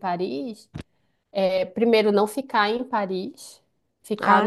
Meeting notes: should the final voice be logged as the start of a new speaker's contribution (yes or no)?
no